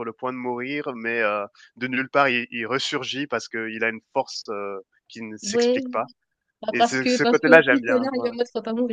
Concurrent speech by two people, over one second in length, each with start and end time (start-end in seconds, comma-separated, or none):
6.7-8.3